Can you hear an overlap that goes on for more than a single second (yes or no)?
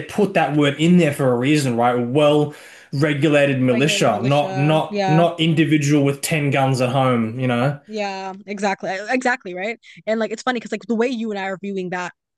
yes